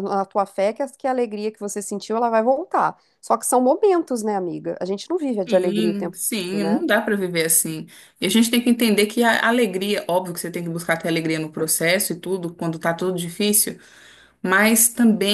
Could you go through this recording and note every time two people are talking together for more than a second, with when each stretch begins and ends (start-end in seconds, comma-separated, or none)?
5.5-6.8